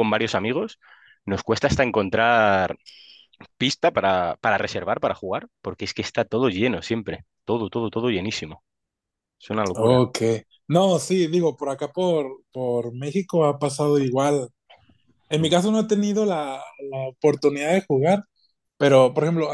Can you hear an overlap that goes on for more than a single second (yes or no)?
no